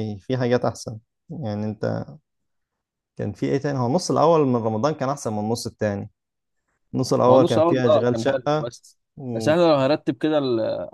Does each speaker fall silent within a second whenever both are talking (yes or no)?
no